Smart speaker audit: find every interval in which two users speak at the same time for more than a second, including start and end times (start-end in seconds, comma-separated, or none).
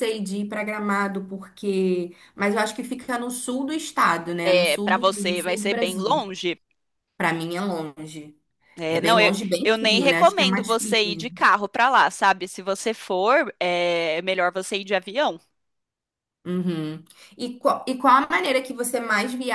4.4-6.2, 8.9-11.3